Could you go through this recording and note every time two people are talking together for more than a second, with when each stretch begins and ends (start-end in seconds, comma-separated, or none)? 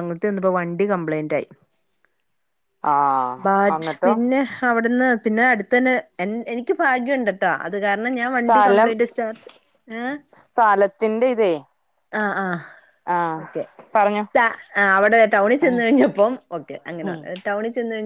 none